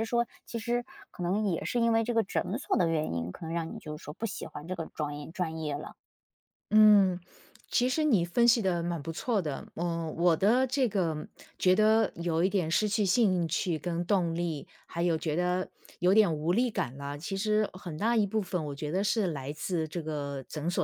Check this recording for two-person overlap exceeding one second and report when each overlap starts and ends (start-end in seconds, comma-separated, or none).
none